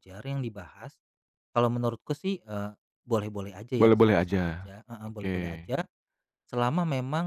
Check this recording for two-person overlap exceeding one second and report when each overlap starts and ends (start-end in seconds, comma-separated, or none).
3.8-5.4